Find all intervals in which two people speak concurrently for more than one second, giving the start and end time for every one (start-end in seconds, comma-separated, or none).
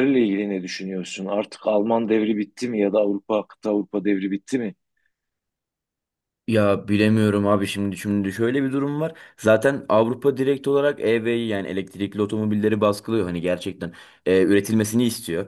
none